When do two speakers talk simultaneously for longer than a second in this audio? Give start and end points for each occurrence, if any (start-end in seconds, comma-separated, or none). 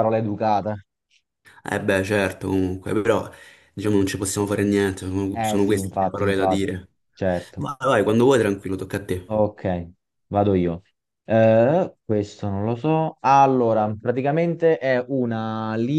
5.3-6.9